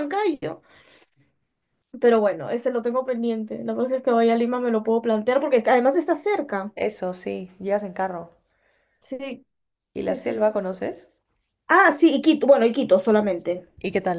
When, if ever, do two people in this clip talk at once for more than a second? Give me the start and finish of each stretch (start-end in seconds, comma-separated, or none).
none